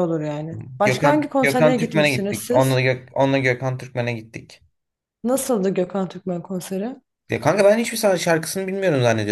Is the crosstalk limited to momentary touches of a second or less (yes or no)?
no